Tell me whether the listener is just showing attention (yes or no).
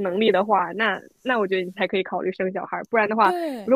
yes